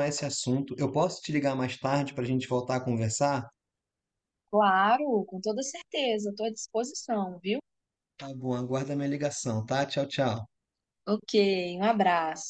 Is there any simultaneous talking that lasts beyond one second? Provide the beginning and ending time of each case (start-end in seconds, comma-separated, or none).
none